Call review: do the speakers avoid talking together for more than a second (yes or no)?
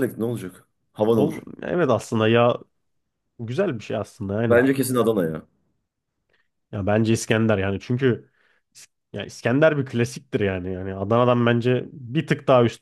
yes